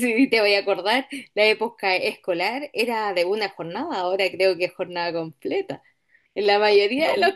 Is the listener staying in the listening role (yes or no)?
yes